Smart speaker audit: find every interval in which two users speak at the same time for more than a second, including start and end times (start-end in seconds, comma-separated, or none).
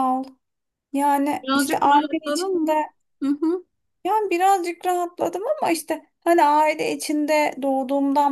1.4-2.8